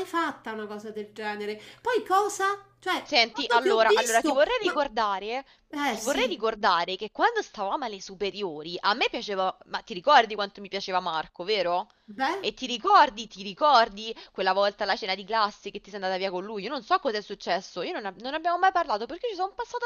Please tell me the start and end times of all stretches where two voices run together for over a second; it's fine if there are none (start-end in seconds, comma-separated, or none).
3.0-4.7